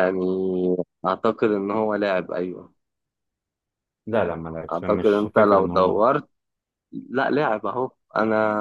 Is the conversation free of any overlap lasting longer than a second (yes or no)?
no